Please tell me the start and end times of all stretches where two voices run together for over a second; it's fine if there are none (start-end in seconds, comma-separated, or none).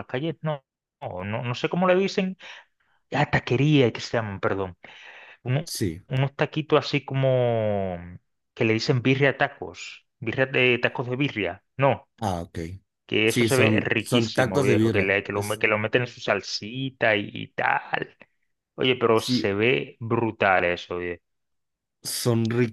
13.2-15.6